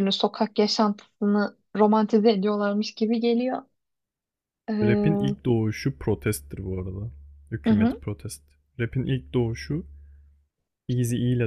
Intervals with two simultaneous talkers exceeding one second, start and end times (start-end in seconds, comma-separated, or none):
none